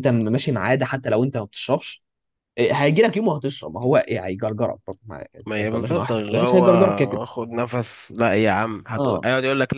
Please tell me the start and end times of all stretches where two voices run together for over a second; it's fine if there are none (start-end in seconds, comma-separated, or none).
5.5-7.2